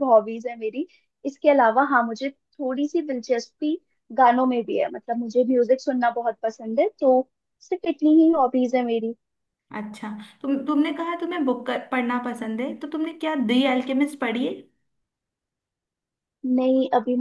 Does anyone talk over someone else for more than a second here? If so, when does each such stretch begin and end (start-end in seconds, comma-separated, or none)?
none